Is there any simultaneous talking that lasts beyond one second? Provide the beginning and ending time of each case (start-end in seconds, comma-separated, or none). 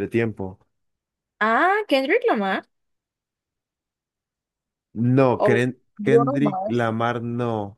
5.4-6.9